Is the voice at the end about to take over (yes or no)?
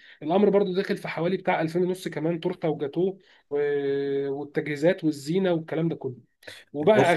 no